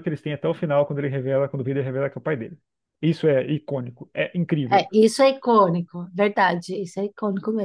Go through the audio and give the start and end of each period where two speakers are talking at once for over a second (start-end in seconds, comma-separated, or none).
none